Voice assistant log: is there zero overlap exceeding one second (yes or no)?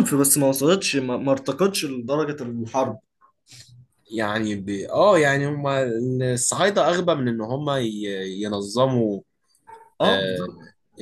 yes